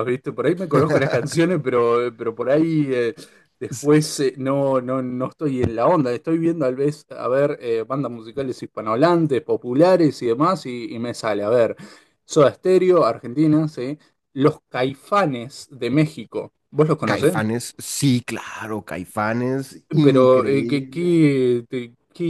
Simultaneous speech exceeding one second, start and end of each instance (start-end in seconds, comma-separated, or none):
20.0-21.2